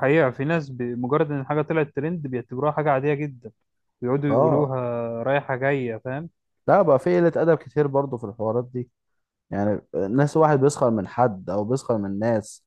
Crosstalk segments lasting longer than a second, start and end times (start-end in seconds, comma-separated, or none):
none